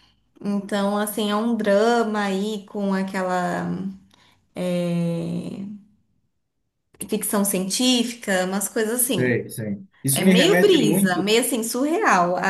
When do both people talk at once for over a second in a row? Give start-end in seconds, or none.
10.1-11.3